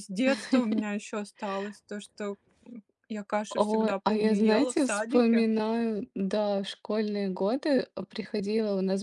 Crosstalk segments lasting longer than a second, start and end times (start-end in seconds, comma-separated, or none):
3.5-5.5